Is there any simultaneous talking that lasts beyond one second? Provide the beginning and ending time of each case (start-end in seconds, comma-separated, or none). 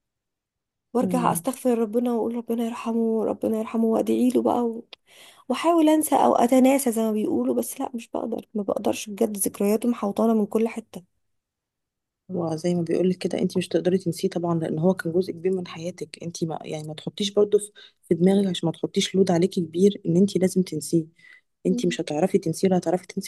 none